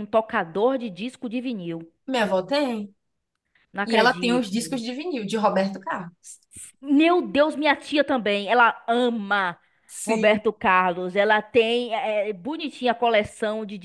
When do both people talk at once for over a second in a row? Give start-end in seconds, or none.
none